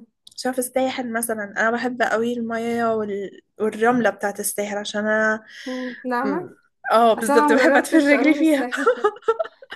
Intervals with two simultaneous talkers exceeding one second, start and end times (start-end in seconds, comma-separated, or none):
7.2-8.7